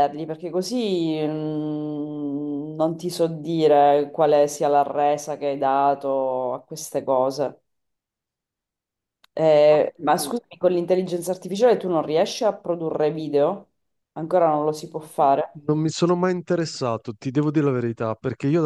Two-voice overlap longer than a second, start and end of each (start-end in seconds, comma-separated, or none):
none